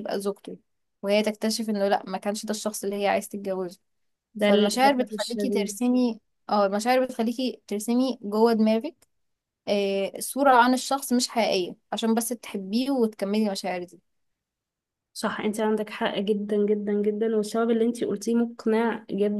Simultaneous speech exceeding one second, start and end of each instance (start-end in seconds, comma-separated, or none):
4.4-5.8